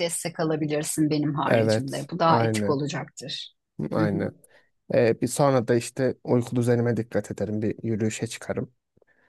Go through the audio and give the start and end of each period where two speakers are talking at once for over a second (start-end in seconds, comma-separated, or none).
1.4-2.8